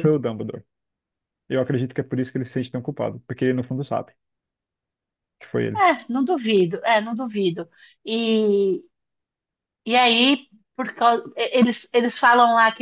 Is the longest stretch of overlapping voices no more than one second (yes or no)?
yes